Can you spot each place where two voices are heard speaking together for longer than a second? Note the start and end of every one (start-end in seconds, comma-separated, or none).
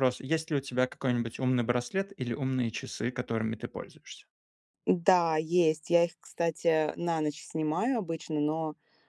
none